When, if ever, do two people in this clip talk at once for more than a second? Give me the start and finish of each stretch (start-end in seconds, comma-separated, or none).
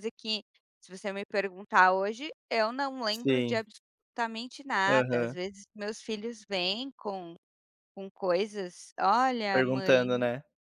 none